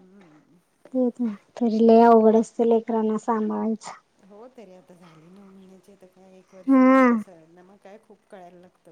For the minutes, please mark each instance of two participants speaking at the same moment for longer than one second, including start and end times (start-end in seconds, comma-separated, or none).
none